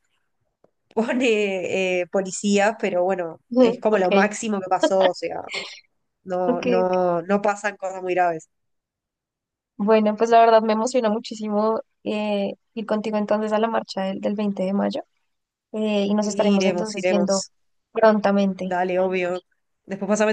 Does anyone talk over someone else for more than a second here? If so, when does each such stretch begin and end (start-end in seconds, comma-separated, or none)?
16.2-17.5